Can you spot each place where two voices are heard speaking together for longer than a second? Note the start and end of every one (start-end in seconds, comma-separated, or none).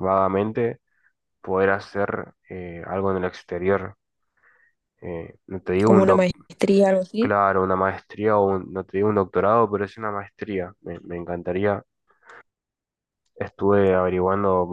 none